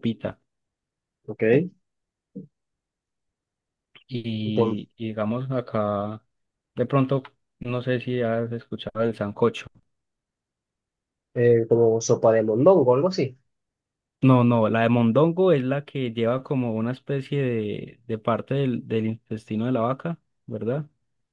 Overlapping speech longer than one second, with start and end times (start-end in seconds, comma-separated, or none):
none